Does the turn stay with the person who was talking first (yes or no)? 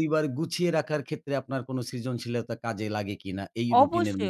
no